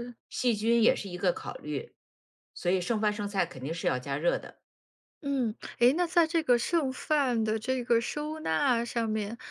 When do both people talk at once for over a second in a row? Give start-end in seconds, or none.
none